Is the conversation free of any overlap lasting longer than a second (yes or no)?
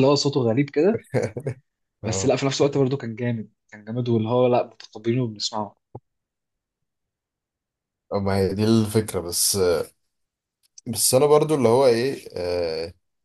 yes